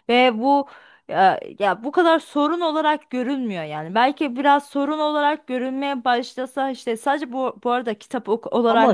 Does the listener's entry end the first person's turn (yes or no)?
yes